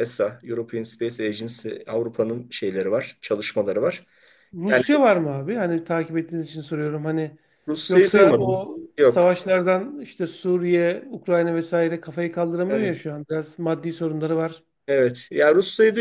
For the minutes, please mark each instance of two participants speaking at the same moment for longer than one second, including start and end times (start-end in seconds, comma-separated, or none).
7.9-9.3